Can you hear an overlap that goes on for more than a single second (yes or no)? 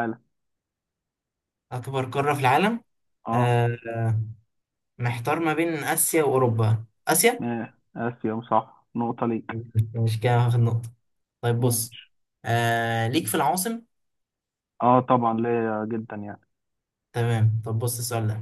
no